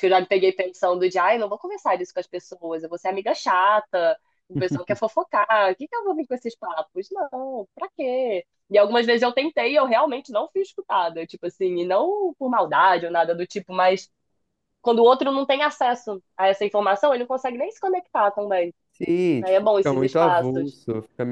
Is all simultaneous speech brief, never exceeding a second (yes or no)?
no